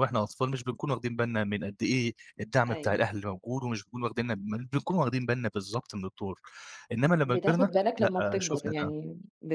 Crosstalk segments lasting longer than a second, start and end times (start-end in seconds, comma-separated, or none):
7.2-8.9